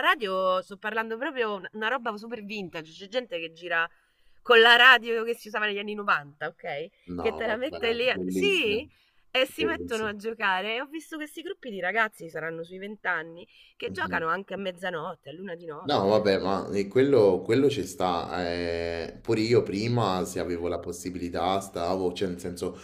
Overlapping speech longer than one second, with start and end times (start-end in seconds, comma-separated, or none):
7.1-8.8